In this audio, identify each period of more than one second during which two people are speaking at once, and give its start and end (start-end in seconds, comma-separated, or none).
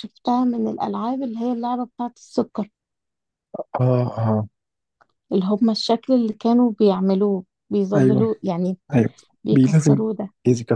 none